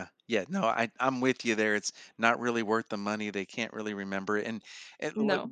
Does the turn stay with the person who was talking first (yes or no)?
yes